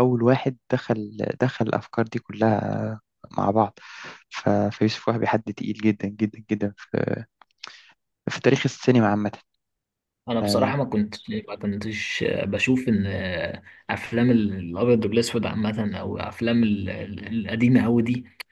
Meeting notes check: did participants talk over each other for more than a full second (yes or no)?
no